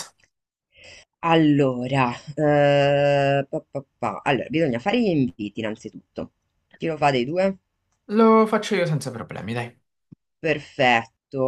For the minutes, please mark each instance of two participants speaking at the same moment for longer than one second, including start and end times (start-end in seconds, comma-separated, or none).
none